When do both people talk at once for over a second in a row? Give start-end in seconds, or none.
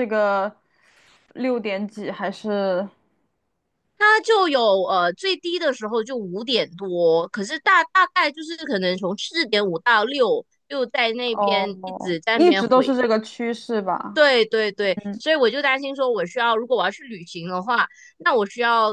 11.3-12.9